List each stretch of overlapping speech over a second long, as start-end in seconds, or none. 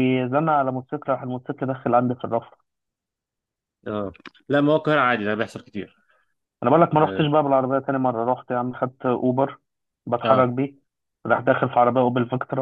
none